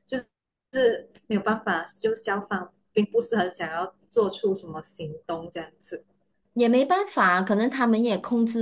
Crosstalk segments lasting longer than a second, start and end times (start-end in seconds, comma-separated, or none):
none